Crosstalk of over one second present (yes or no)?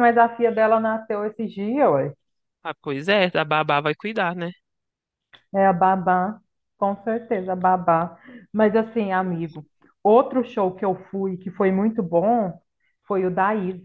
no